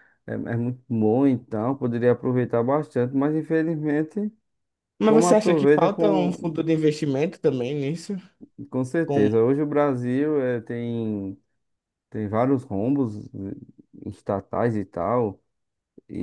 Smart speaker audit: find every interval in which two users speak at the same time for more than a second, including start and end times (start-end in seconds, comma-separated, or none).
5.0-6.5